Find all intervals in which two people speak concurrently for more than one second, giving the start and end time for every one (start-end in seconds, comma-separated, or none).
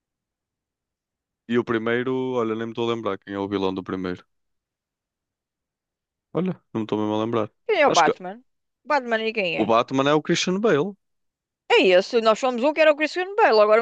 none